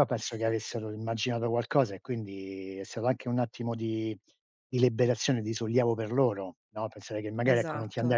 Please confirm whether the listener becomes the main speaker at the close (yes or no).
no